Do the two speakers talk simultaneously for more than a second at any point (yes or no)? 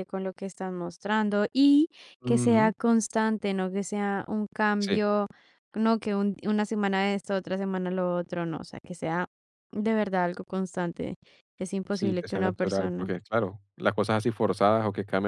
yes